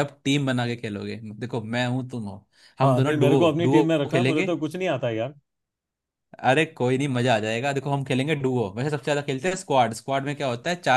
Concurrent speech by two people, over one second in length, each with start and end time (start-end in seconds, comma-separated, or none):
2.8-4.5